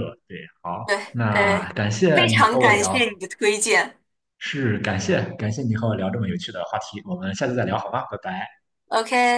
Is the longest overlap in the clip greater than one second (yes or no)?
yes